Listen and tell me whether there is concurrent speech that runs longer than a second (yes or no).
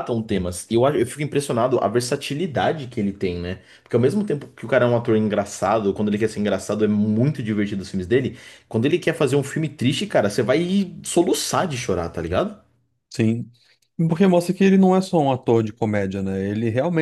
no